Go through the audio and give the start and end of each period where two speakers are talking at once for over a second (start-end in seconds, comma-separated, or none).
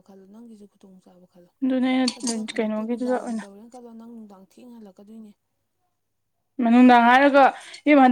2.2-3.5